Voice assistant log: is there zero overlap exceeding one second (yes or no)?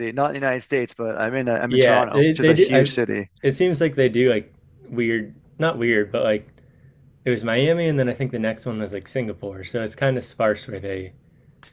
no